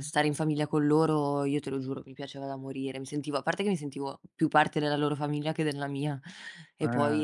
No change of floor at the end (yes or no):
yes